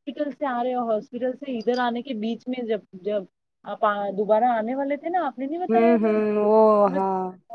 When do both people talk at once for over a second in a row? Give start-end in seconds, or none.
5.7-7.0